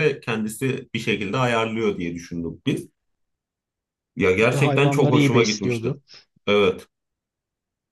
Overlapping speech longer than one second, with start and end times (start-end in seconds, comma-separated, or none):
4.4-6.0